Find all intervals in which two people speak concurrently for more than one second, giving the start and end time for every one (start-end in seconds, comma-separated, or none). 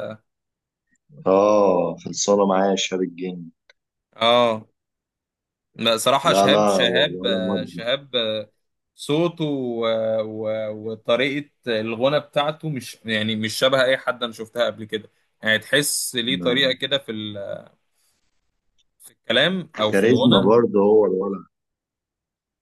6.2-7.8